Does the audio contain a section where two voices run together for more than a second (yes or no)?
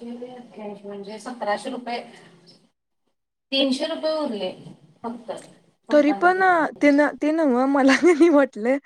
no